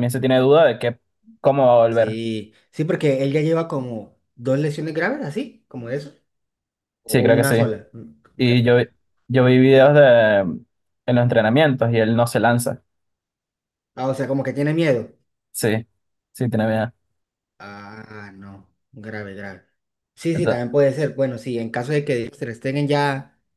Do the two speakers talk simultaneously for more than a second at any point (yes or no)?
no